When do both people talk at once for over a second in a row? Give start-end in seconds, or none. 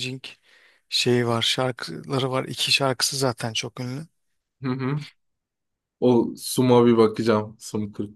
none